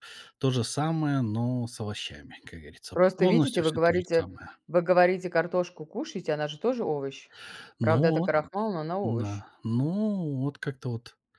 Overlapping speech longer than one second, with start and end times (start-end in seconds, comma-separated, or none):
3.0-4.3